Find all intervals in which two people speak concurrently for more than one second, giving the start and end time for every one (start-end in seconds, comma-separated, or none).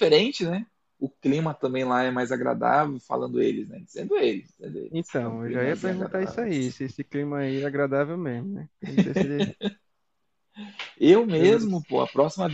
4.9-6.5